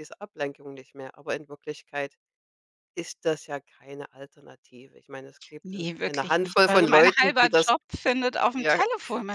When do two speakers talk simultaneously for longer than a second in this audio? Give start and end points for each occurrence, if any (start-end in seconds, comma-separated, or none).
5.7-7.7